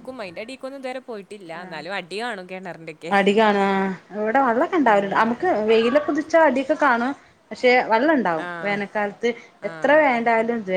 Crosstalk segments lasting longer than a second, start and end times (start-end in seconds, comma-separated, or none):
none